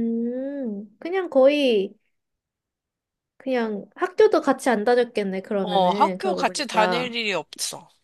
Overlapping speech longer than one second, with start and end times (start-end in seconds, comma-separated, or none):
5.6-7.1